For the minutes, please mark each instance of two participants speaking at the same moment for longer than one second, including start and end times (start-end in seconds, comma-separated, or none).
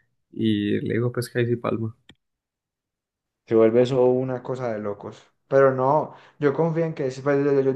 none